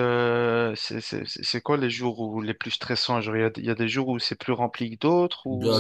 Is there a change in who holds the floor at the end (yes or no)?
yes